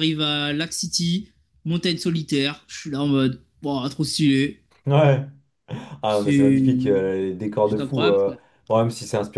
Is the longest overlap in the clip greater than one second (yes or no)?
no